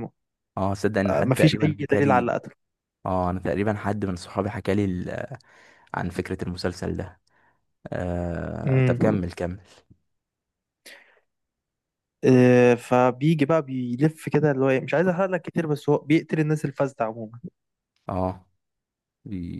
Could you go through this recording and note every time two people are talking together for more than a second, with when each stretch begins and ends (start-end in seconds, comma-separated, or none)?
1.1-2.3